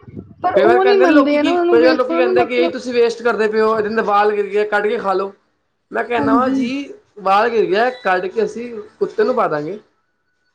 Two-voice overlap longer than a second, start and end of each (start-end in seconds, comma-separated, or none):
0.5-2.7